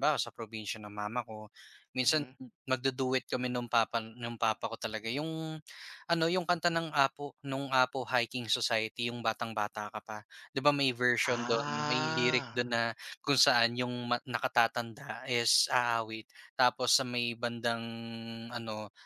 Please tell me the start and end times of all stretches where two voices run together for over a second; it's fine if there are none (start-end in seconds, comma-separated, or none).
11.2-12.6